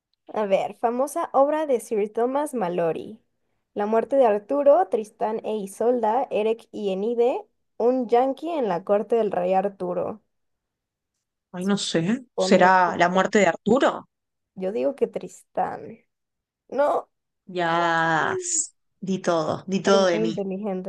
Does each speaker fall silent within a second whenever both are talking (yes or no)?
yes